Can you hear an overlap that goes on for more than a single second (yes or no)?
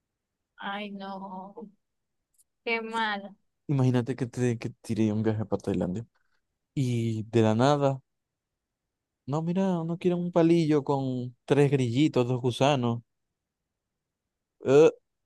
no